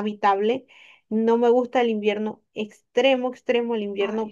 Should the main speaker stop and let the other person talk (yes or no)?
no